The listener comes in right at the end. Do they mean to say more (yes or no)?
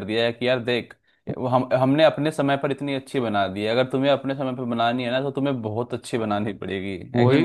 yes